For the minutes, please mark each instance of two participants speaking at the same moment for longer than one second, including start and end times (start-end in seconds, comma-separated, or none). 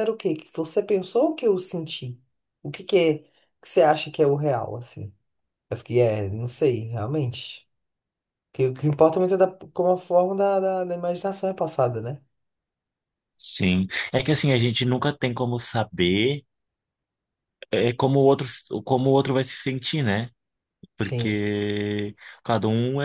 none